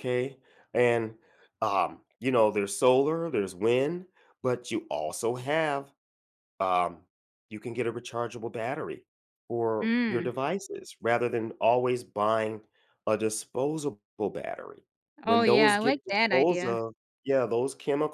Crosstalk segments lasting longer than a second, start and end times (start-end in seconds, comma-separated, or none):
15.3-16.8